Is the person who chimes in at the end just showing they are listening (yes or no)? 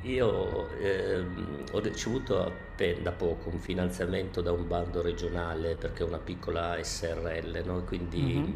yes